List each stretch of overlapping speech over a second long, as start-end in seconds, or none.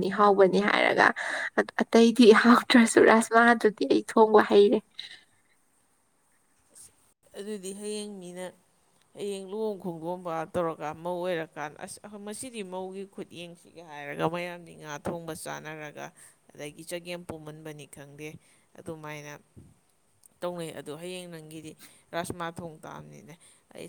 none